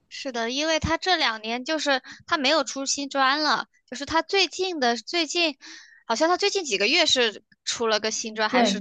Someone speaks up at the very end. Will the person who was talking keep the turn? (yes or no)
no